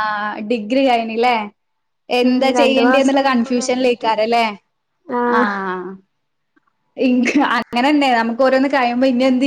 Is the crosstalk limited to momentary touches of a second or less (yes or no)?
no